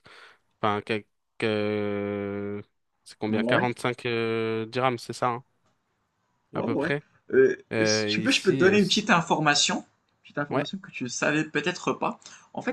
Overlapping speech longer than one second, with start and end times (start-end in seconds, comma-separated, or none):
7.7-9.1